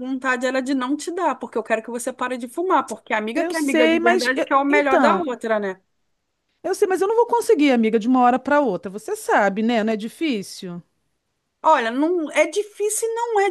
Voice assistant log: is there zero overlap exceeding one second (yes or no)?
no